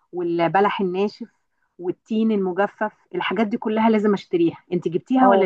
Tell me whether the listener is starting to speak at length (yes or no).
yes